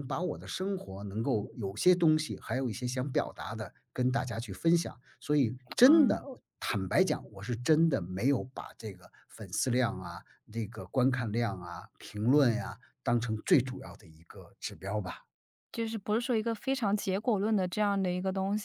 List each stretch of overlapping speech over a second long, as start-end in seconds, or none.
none